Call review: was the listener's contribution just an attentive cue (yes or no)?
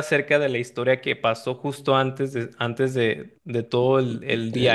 yes